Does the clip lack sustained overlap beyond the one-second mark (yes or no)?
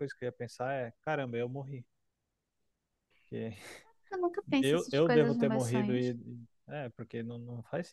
no